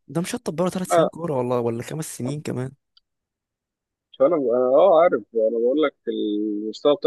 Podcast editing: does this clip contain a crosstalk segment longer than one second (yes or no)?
no